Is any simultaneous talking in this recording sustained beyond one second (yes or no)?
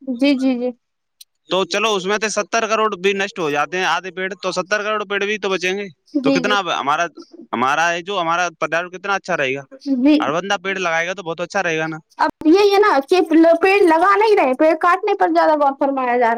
no